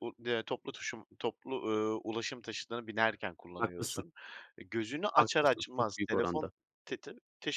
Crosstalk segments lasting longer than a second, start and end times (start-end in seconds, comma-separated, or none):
5.2-6.5